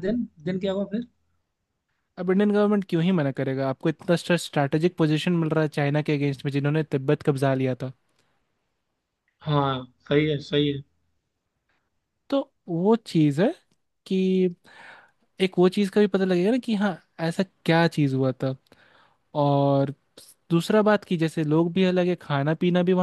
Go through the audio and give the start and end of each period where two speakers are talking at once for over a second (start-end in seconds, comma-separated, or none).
none